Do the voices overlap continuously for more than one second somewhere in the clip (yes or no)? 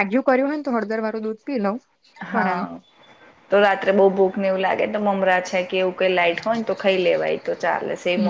no